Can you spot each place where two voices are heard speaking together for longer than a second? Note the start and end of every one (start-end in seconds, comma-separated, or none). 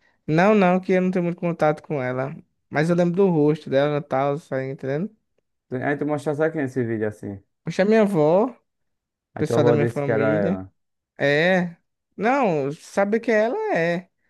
9.4-10.6